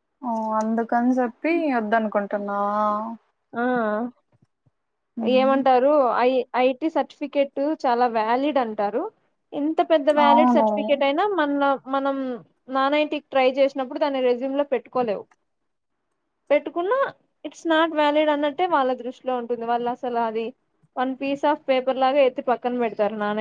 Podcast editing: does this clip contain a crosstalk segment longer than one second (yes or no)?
no